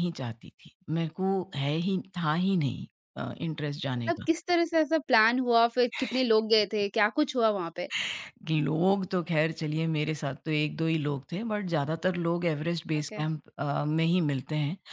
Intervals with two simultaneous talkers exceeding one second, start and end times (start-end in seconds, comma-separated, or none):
none